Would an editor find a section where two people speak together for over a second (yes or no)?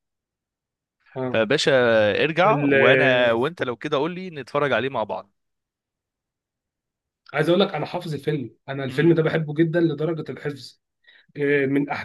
no